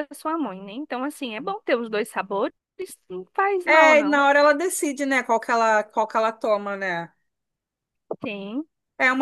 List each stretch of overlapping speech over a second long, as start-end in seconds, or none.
none